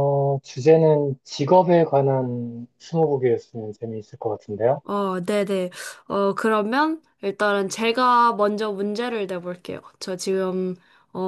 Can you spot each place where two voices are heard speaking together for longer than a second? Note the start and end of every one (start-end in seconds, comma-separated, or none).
none